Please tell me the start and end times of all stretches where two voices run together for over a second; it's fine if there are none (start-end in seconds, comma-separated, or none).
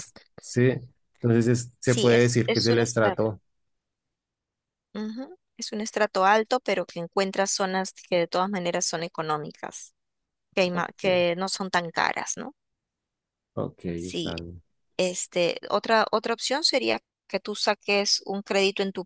1.8-3.2